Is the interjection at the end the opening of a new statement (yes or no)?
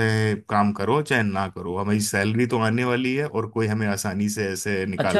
yes